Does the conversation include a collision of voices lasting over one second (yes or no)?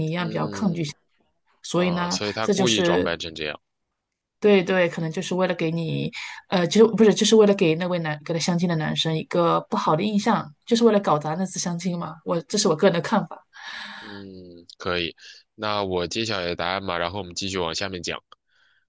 yes